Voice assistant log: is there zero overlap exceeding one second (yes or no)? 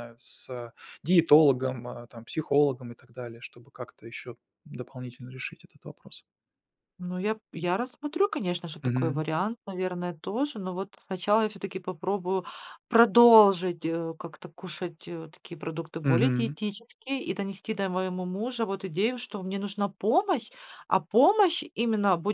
yes